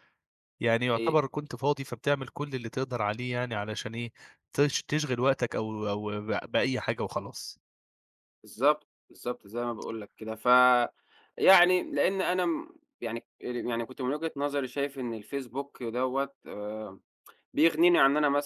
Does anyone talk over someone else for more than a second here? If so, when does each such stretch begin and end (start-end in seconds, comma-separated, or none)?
none